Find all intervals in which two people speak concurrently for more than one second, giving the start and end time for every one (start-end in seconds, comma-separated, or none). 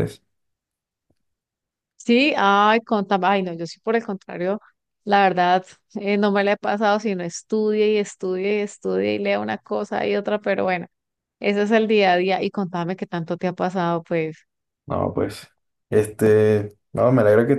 none